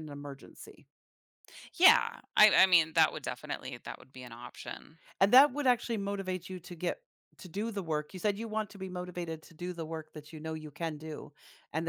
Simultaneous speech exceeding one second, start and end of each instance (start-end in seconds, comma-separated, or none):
none